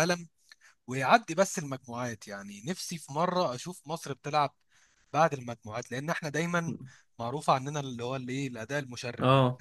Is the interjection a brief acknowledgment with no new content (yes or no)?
yes